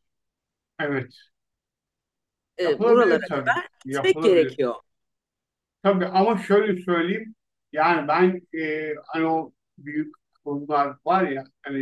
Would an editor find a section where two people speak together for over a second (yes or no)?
yes